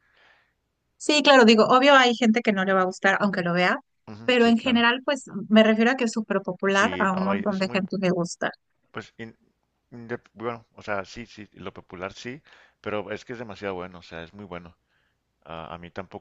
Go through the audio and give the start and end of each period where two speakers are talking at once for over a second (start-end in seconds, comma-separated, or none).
6.7-7.9